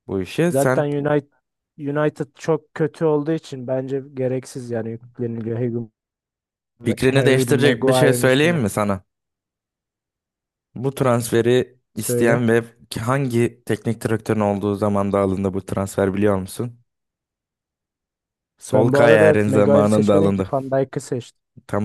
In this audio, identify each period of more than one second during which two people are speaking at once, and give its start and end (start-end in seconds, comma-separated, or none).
7.0-8.6, 18.7-20.5